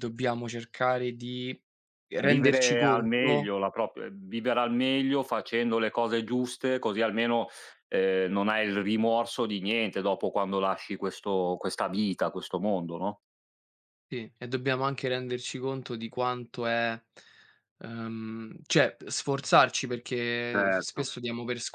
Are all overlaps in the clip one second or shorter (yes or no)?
no